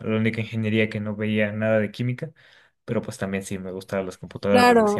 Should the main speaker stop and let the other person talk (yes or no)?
yes